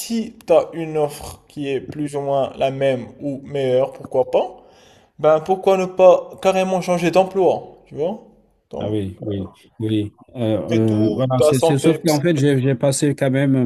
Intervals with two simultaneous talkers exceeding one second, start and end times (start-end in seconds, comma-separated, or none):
10.7-12.2